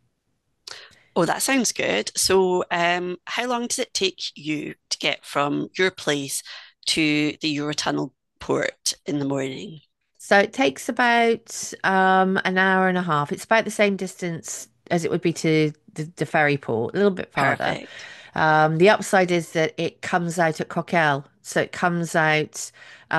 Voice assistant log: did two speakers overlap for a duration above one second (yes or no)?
no